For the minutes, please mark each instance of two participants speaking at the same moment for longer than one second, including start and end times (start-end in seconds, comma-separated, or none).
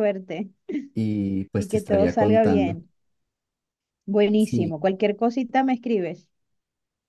1.6-2.8